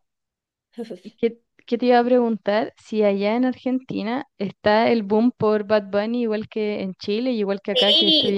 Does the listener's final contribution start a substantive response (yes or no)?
yes